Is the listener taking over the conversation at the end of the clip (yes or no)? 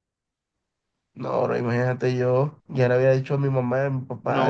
yes